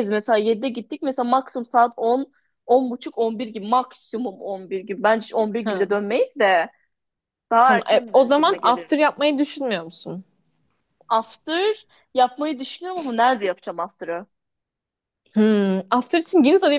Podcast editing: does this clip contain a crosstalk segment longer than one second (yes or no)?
yes